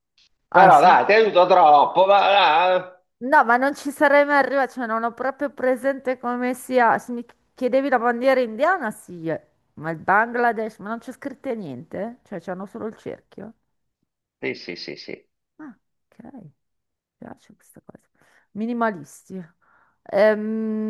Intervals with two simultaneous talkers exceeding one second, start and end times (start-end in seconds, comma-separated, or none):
none